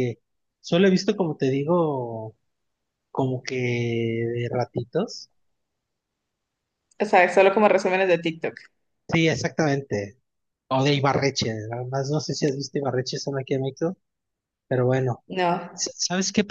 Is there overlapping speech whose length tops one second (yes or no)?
no